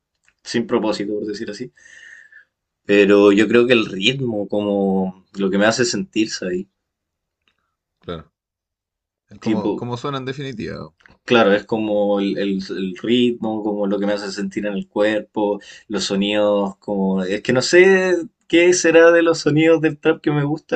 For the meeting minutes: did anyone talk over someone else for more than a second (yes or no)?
no